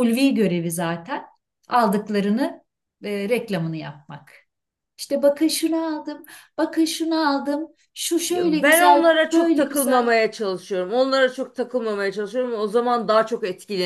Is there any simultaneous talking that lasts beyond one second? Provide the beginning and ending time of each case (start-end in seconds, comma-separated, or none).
8.3-10.2